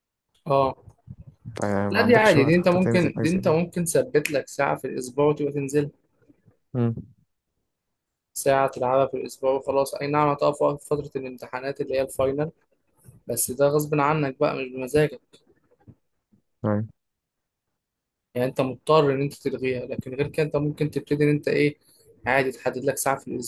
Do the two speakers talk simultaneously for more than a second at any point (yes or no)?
yes